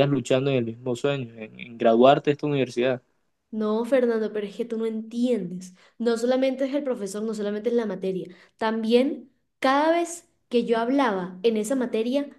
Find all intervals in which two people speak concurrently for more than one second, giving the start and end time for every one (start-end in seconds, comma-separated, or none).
none